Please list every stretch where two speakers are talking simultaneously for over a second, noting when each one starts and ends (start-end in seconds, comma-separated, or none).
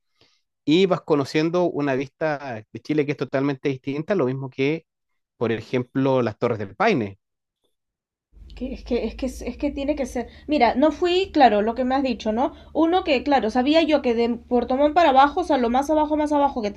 none